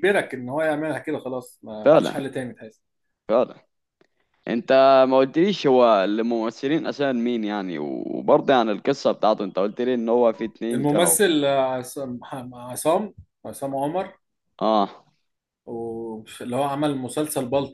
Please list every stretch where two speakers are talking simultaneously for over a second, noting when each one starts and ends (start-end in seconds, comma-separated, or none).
none